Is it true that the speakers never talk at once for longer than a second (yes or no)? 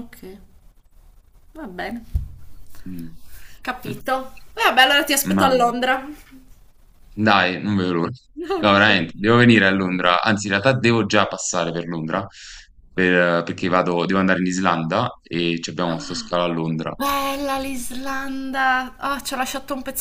yes